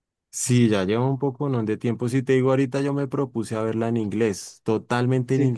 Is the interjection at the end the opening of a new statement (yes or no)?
no